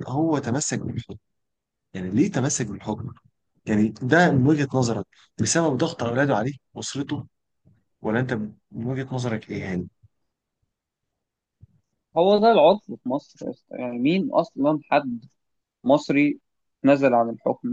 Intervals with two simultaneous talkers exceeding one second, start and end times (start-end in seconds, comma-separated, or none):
none